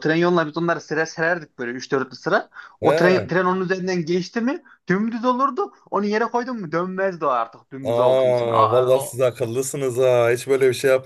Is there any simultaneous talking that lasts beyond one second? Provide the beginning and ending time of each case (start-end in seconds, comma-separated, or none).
7.8-9.2